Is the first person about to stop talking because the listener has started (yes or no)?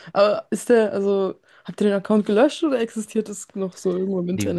yes